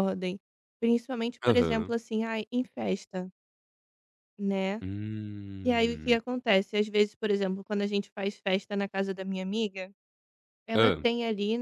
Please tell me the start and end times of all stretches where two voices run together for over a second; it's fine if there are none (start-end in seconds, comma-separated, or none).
none